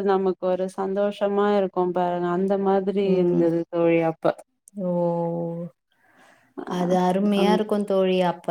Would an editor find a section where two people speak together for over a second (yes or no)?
no